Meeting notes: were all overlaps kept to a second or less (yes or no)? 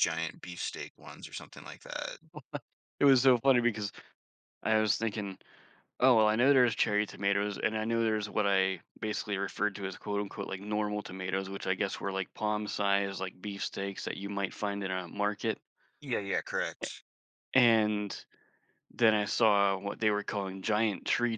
yes